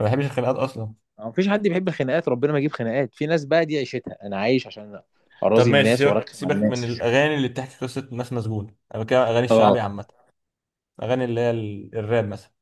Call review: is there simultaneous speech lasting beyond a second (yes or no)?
yes